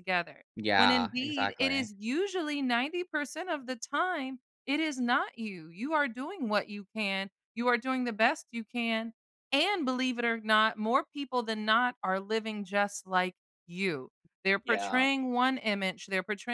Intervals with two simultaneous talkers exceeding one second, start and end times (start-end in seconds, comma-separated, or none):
0.6-1.9